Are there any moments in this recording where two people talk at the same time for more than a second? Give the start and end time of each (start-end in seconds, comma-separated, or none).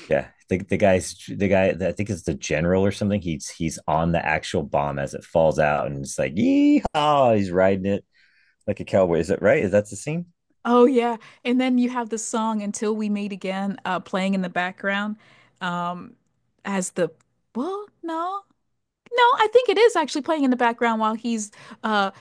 none